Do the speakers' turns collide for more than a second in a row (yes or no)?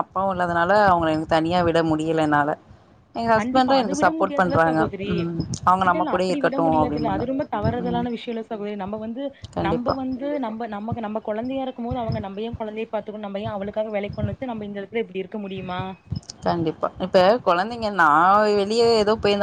yes